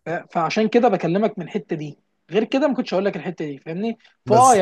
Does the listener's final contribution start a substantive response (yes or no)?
no